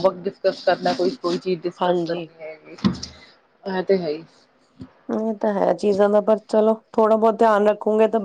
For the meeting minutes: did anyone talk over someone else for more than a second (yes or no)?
no